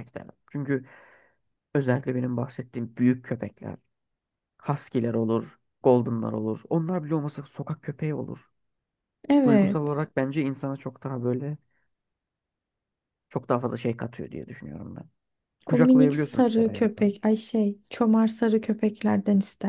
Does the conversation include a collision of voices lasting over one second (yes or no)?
yes